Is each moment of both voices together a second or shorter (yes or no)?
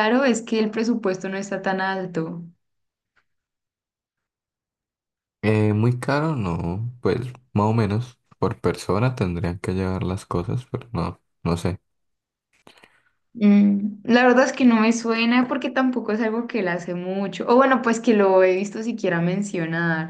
yes